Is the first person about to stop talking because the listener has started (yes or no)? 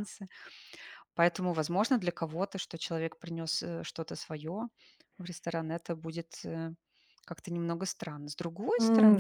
yes